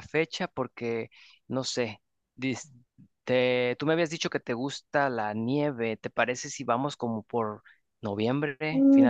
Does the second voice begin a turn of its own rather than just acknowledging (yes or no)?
yes